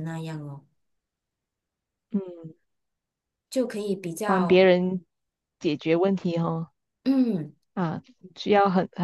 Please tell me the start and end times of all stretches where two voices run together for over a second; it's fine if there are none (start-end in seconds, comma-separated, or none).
none